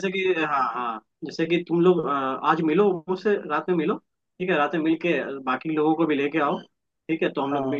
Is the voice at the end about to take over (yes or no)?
no